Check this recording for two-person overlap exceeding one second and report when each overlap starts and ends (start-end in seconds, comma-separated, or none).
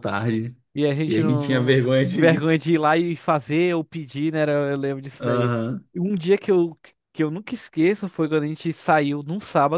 1.1-2.5